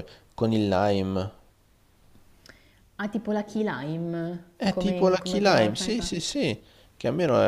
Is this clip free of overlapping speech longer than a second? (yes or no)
no